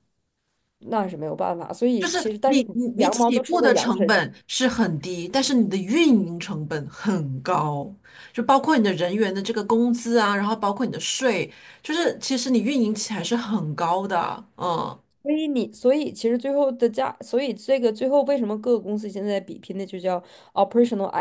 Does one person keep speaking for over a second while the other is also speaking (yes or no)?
yes